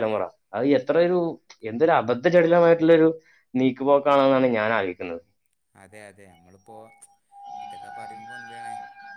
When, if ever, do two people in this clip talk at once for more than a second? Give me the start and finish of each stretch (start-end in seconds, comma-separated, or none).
none